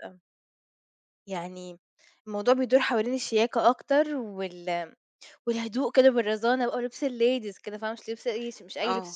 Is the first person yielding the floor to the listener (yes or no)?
yes